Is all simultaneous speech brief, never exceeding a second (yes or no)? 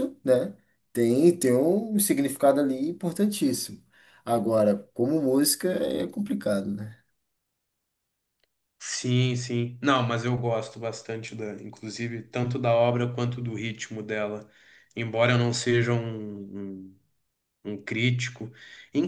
yes